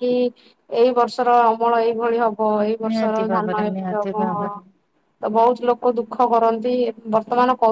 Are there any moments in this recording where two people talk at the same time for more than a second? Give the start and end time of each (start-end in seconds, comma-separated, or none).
2.9-4.5